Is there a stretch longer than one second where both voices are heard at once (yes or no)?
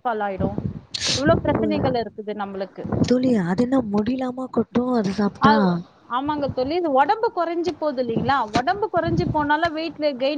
no